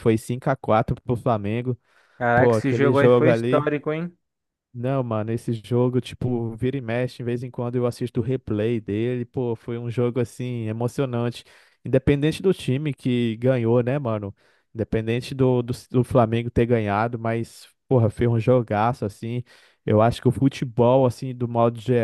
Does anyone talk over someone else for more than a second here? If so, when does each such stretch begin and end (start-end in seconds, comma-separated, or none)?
2.4-3.7